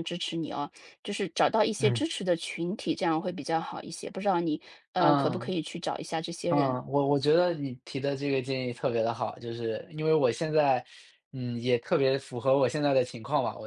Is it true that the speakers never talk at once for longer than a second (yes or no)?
yes